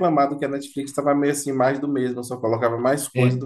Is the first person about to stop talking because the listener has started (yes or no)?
yes